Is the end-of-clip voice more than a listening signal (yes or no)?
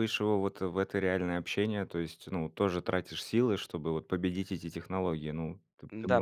yes